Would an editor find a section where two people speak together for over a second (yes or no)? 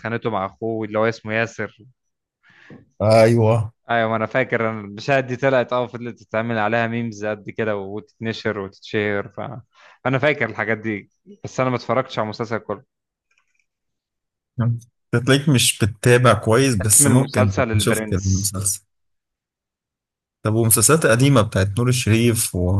yes